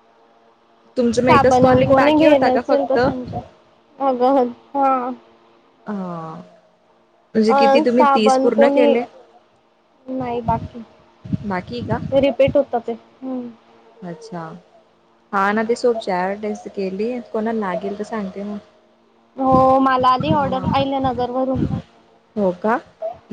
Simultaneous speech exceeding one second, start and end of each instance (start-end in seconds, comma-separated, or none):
1.3-3.0